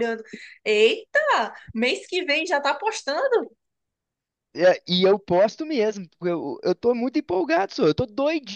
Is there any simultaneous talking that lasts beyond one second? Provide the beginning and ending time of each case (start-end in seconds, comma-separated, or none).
none